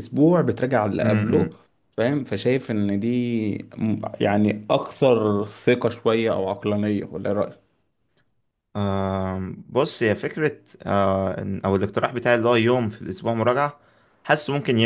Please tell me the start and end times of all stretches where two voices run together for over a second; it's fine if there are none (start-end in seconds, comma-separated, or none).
none